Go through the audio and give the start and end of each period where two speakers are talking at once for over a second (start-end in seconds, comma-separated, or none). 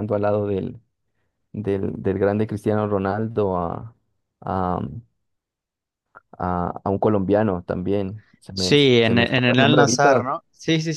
8.5-10.3